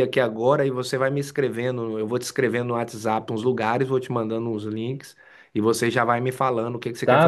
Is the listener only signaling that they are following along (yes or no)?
no